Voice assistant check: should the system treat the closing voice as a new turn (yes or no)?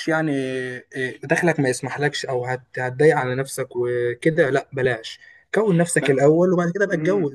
yes